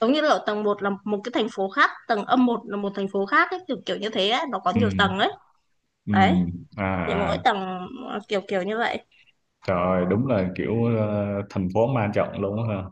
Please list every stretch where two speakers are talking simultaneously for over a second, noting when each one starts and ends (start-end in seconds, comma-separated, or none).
none